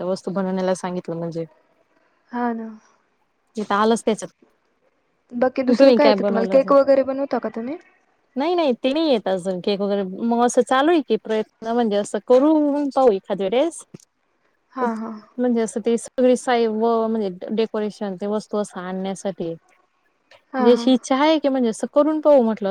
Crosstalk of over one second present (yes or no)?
no